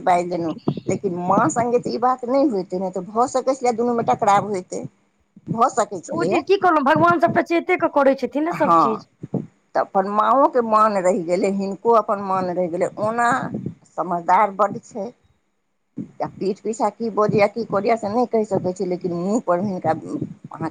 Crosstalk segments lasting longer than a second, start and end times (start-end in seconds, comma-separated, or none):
none